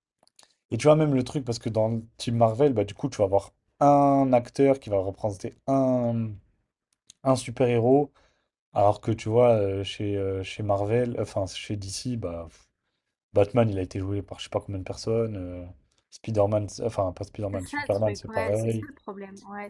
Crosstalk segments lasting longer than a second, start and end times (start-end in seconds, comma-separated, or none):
17.5-18.9